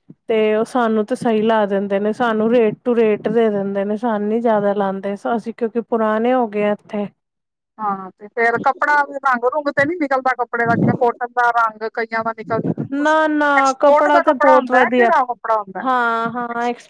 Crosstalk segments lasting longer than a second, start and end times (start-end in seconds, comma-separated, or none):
none